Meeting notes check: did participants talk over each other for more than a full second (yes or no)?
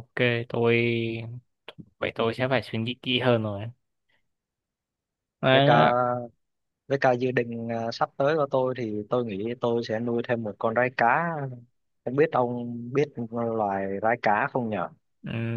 no